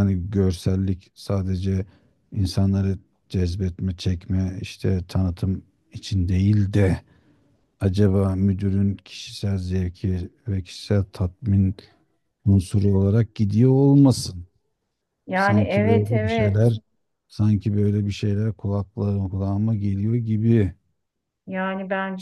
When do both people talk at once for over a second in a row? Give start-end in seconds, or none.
15.3-16.8